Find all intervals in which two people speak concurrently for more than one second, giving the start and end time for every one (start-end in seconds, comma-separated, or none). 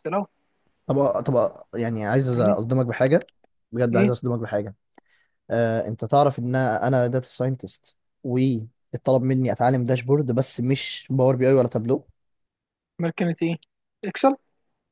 none